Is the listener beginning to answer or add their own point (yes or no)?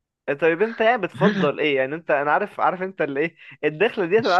no